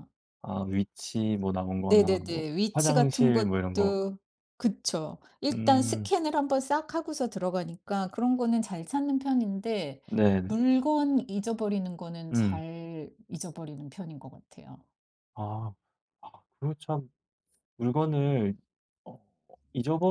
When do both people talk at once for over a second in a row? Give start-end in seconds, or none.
1.9-4.0